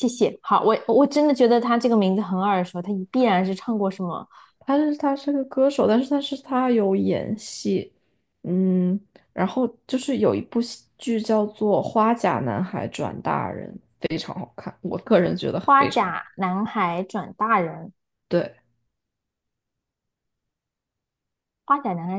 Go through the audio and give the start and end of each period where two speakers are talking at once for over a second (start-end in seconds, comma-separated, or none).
none